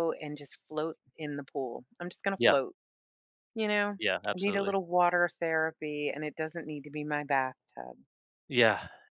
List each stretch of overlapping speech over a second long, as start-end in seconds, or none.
none